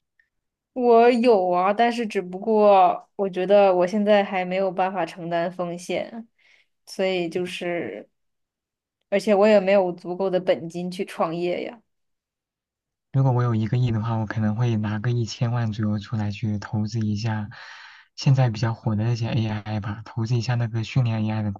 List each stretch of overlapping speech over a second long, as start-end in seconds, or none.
none